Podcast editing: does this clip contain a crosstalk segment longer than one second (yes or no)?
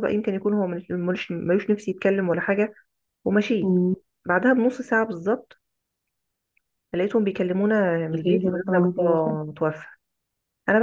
yes